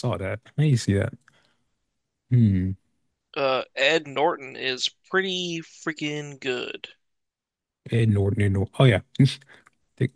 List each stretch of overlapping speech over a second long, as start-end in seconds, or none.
none